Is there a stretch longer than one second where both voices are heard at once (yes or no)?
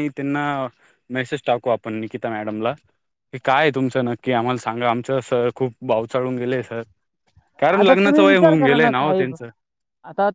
yes